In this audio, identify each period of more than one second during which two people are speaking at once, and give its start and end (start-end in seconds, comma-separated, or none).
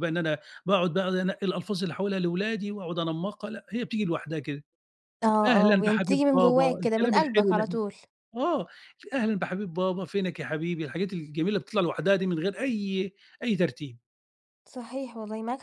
5.5-7.8